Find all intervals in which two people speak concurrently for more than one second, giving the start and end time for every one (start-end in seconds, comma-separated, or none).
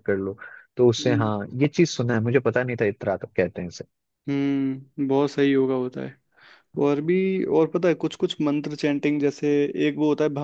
none